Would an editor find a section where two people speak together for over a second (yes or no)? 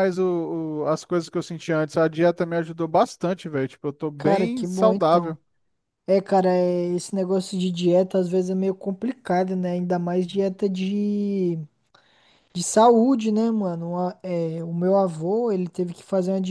yes